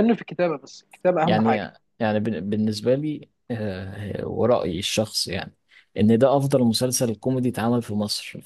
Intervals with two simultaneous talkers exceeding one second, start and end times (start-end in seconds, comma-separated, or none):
none